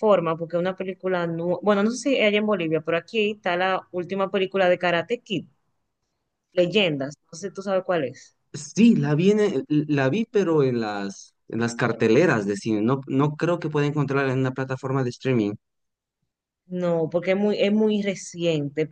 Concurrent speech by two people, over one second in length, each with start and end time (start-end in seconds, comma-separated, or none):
none